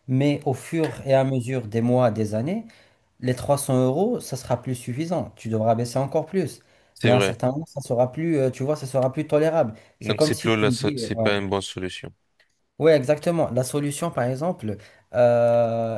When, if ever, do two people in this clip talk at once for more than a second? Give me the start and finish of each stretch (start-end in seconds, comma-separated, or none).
10.0-11.3